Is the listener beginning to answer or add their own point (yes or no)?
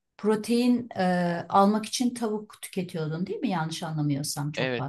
yes